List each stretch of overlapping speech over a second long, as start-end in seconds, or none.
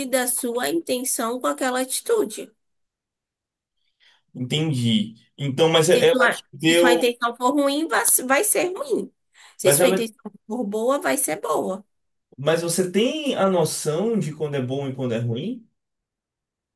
5.9-7.1